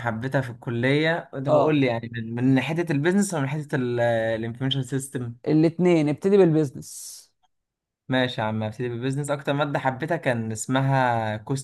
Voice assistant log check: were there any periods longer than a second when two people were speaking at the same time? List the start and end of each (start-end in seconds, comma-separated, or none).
none